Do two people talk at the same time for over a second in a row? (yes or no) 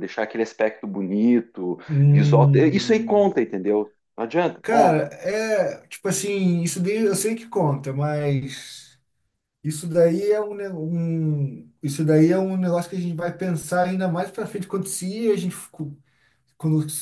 yes